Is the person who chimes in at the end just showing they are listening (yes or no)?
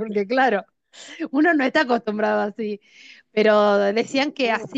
yes